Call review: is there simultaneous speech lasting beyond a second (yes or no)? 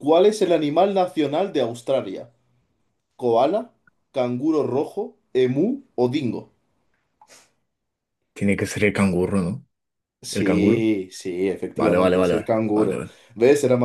yes